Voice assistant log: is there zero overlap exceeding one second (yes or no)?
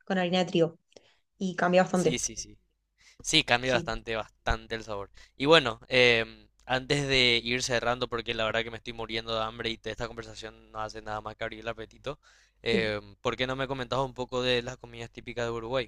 yes